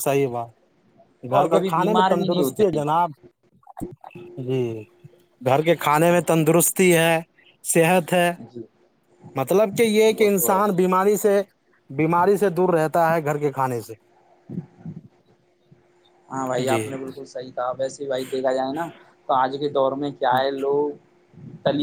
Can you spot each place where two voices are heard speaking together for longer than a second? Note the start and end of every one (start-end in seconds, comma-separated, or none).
1.3-2.8